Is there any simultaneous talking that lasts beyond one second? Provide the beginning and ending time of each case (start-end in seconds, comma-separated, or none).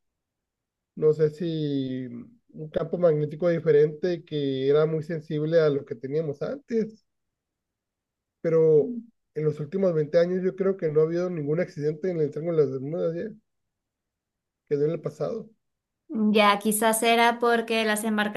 none